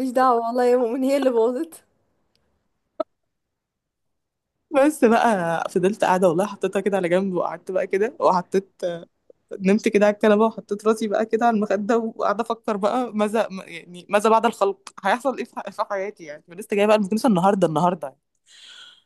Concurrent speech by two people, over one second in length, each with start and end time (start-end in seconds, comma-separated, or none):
none